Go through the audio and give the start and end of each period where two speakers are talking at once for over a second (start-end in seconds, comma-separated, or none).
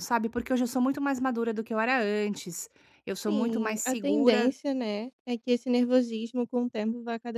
3.1-4.5